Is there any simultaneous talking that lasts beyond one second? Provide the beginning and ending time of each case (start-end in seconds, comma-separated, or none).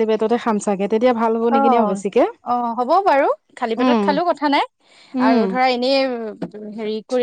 none